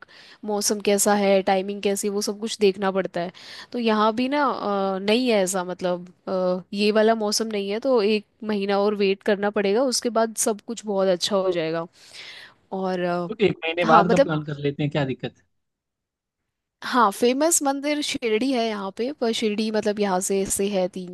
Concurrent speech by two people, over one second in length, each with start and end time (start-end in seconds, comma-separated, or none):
none